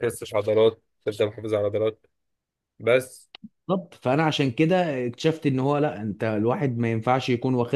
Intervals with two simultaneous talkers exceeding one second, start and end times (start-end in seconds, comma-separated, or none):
none